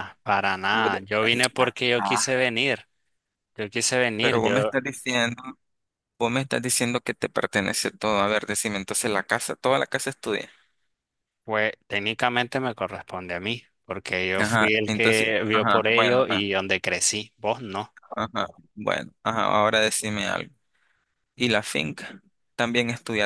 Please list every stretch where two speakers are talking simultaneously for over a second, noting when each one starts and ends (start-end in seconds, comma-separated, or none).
14.4-16.4